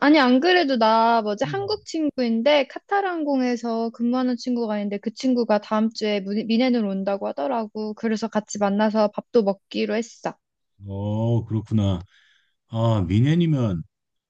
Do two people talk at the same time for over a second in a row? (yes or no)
no